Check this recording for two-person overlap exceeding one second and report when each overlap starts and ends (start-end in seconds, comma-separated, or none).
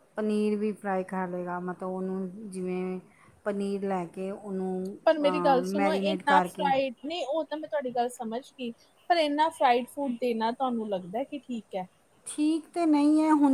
5.0-6.7